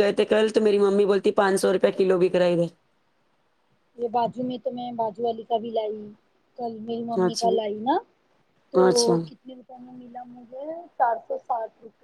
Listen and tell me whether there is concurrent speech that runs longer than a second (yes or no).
no